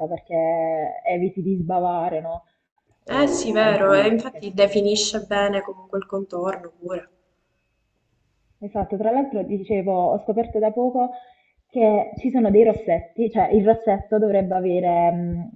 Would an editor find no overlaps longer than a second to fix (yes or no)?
no